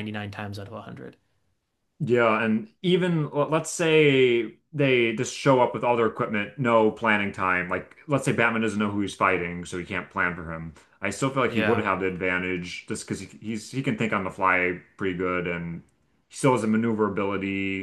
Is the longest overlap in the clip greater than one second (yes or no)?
no